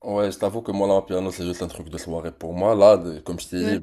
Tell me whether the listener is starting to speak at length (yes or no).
no